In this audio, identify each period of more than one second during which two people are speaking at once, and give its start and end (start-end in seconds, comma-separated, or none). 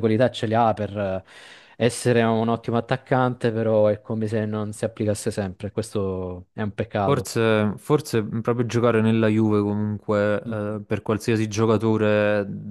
none